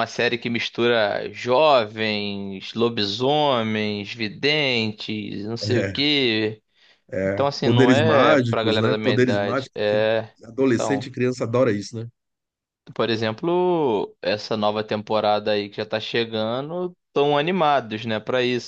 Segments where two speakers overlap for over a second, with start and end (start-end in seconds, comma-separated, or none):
7.2-10.0